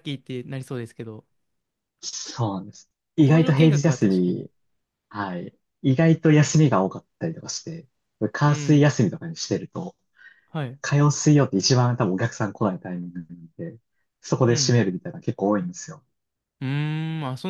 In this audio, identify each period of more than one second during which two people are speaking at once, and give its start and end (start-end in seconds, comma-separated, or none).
3.2-4.5